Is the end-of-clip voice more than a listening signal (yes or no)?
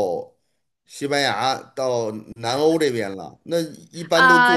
yes